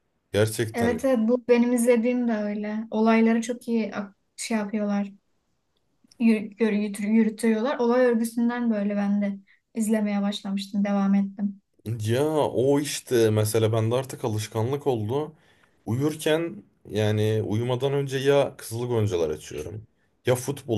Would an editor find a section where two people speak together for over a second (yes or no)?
no